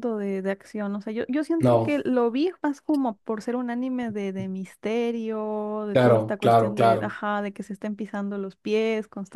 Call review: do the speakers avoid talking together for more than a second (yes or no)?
no